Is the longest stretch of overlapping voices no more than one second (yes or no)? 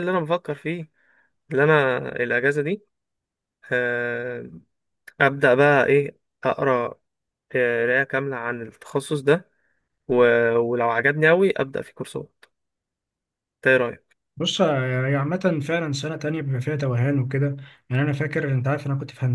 yes